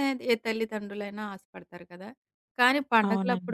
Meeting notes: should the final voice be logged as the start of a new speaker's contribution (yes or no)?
no